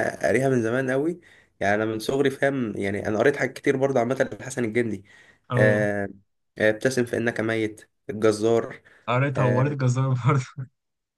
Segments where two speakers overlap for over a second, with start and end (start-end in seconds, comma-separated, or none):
none